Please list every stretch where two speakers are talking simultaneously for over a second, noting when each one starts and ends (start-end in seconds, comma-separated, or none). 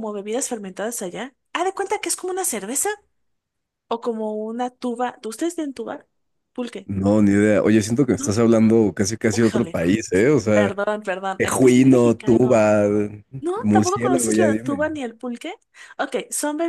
11.4-12.7, 13.6-14.9